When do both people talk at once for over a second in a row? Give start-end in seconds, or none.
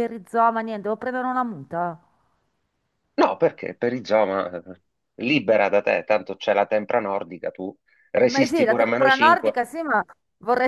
8.2-9.6